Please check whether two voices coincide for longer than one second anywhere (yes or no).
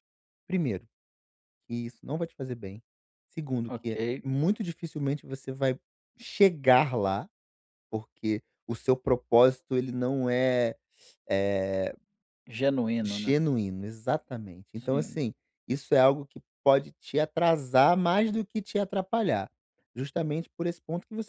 no